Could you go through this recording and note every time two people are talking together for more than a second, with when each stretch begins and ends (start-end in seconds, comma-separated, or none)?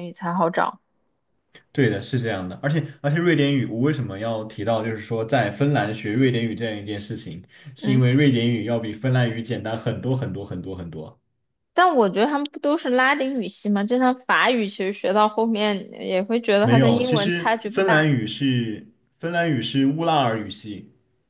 16.6-18.1